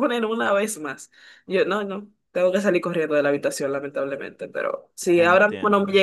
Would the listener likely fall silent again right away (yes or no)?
yes